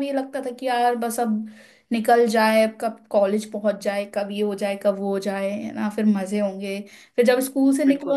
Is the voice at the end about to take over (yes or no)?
no